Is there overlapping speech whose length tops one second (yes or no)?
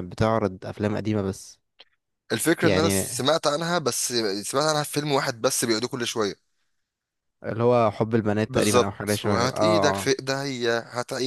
yes